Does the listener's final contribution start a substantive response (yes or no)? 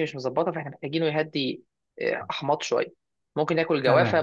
no